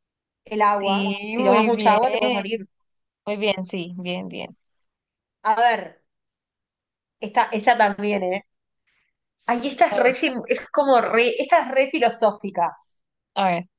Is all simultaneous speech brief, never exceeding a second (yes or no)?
no